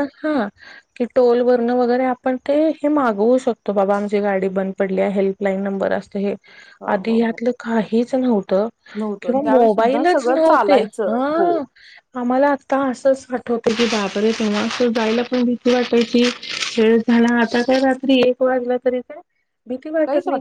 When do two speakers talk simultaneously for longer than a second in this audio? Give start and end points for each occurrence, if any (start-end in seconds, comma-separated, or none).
9.2-11.5